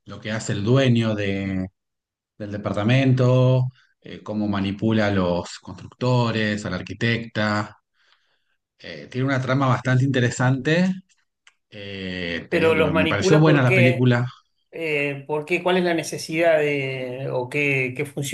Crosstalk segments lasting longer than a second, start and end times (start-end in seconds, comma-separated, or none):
12.5-14.1